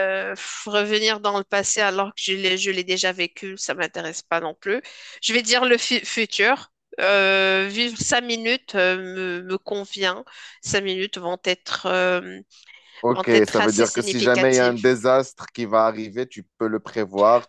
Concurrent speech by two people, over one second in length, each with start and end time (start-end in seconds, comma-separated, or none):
13.1-14.8